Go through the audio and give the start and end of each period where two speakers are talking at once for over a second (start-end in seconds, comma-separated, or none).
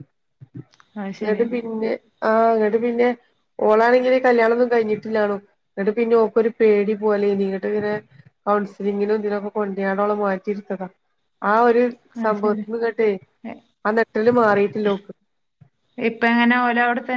none